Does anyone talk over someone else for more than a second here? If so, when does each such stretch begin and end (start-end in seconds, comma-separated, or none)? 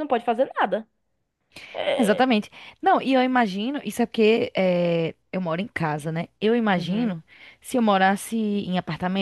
none